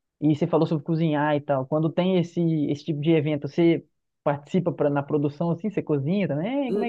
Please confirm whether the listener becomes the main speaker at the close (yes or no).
yes